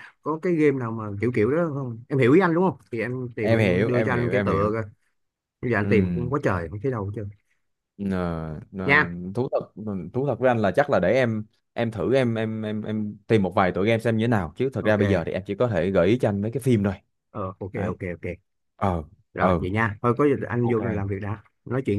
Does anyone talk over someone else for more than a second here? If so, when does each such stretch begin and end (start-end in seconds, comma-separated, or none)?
3.4-4.7